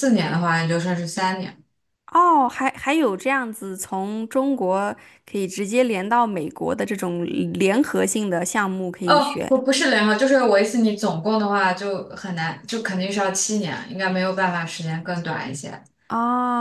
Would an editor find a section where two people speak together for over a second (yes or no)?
no